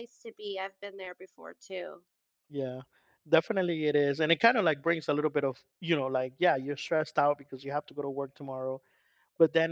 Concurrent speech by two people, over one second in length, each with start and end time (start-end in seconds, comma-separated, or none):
none